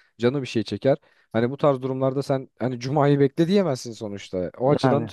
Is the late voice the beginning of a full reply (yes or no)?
no